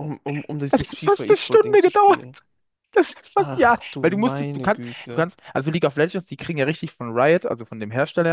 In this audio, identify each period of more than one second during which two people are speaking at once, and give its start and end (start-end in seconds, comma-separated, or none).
0.7-2.2, 3.4-5.3